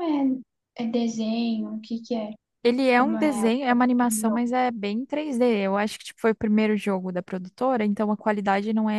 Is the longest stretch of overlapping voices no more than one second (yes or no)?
no